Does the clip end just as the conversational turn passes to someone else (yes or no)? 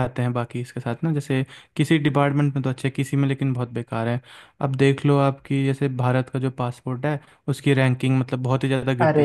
yes